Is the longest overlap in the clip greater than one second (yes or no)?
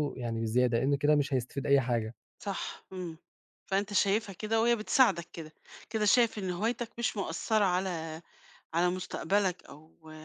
no